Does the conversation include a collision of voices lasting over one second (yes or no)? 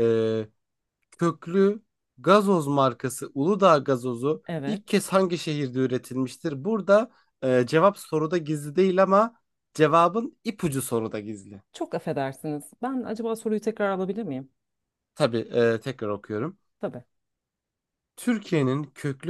no